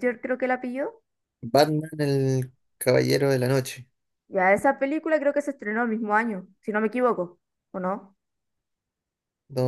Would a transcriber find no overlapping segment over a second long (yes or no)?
yes